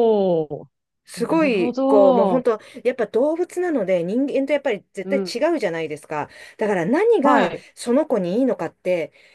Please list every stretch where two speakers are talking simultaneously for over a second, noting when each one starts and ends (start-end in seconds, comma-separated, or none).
1.2-2.4